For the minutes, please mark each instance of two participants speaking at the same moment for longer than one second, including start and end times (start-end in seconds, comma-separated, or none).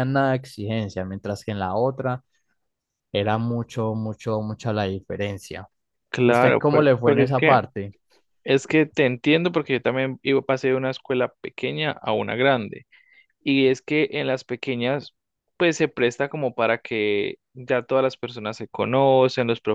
6.2-7.6